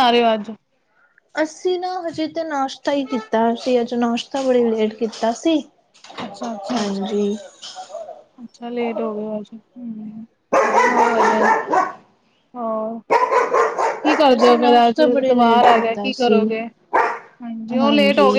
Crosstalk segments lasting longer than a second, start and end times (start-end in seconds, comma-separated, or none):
14.4-16.4